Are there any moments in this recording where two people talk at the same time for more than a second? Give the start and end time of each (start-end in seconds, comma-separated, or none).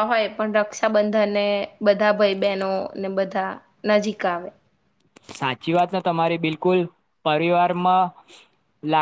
none